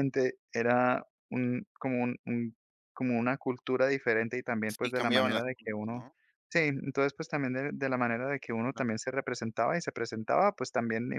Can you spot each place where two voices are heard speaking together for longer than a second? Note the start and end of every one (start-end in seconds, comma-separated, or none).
4.7-6.1